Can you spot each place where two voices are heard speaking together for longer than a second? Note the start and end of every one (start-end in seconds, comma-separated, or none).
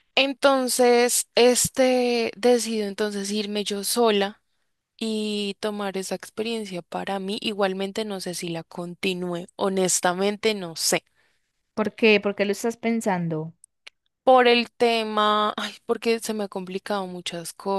none